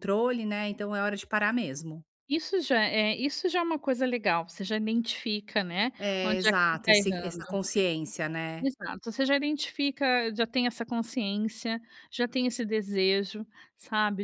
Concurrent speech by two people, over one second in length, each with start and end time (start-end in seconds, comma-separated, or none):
6.0-7.6